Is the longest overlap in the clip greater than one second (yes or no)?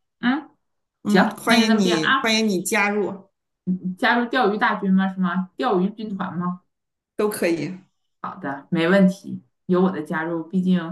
yes